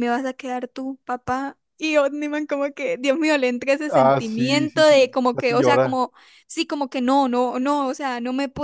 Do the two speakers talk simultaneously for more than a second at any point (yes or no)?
yes